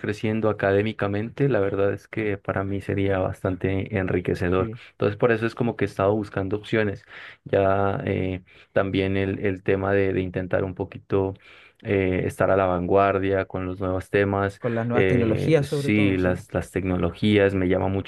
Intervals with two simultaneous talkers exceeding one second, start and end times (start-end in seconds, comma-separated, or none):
14.6-16.3